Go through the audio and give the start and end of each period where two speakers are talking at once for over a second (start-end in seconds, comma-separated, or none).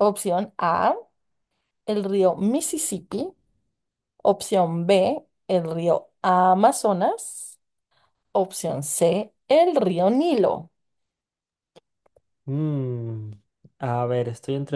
none